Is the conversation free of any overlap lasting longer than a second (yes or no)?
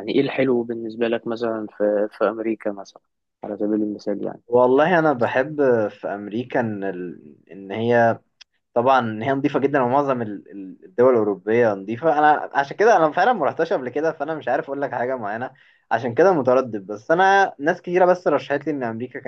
yes